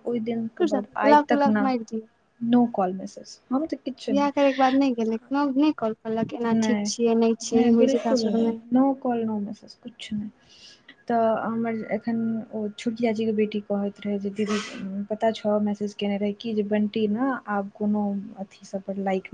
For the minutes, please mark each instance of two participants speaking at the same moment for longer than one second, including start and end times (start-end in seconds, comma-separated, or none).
none